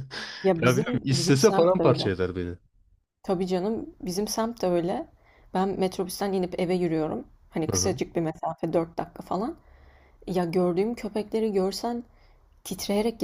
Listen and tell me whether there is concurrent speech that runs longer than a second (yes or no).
yes